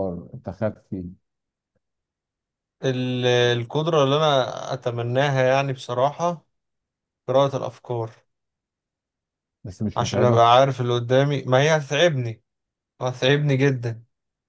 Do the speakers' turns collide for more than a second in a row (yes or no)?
no